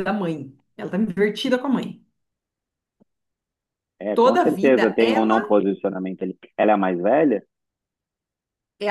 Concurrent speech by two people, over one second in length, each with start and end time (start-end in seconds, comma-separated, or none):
4.1-5.6